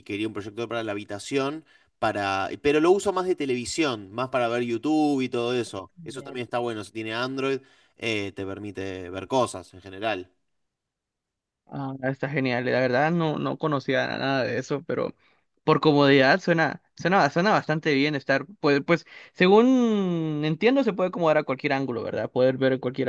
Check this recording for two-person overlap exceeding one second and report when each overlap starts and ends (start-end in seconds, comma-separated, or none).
none